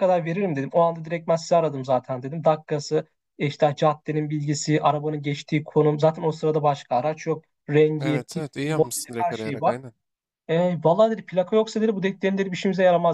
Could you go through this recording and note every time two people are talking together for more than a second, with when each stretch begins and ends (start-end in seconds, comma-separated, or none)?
8.0-9.8